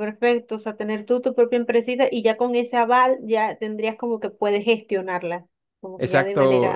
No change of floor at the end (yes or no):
no